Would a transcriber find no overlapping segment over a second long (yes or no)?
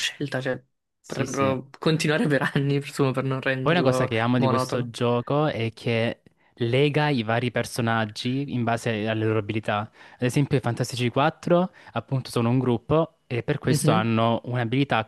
no